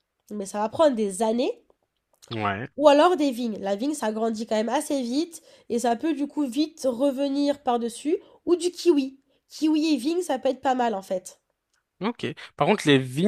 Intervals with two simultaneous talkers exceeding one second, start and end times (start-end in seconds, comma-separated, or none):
none